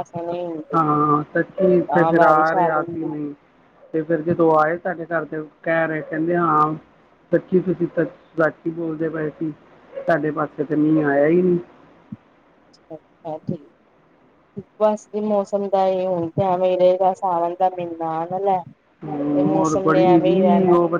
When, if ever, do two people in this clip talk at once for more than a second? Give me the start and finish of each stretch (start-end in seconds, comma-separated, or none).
1.8-3.3